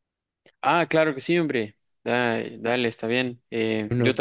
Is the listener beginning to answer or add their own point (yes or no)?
no